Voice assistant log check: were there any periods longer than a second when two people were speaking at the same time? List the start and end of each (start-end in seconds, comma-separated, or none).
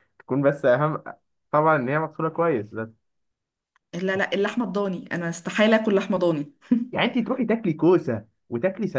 none